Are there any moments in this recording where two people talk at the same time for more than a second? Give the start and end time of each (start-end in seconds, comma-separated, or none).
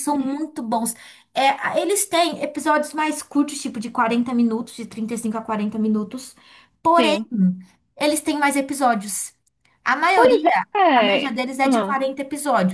10.1-12.0